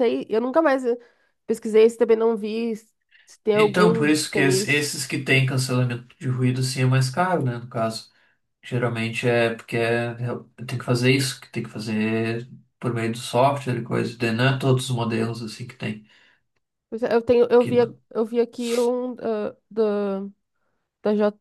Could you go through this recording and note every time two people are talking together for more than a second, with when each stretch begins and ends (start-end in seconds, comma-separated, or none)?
3.5-4.9